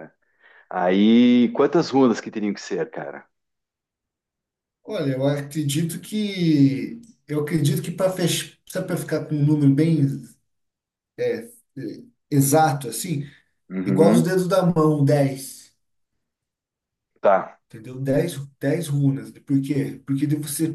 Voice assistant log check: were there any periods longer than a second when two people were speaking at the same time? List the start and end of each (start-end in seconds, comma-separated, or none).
none